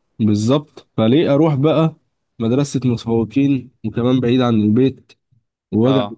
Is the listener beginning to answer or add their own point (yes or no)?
no